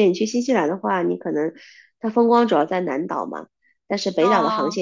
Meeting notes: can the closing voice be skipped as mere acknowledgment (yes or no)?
yes